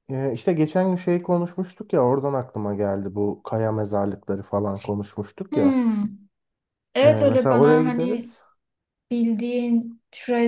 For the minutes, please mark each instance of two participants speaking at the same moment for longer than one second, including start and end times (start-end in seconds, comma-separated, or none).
7.0-8.3